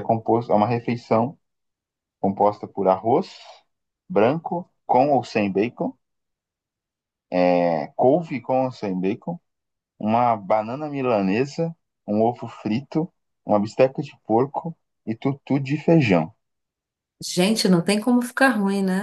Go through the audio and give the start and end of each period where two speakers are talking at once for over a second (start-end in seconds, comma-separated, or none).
none